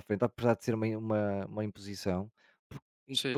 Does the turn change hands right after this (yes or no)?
no